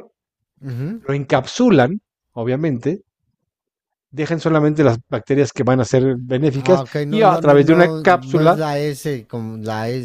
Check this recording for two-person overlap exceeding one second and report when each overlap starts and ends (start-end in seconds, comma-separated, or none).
6.5-8.6